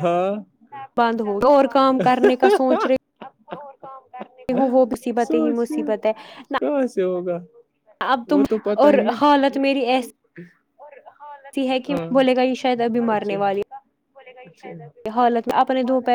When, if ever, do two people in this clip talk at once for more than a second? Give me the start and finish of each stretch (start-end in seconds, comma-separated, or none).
none